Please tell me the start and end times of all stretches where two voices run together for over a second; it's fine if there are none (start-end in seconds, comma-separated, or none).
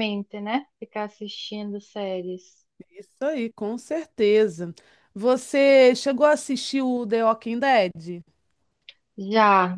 none